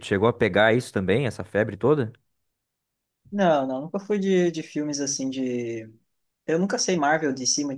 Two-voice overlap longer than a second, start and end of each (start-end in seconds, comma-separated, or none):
none